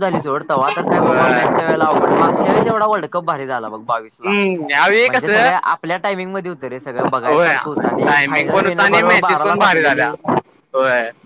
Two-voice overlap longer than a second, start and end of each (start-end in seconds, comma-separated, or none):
7.2-10.1